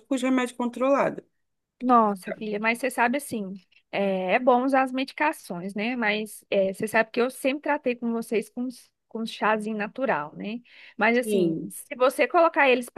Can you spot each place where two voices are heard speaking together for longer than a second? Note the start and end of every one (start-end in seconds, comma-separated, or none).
none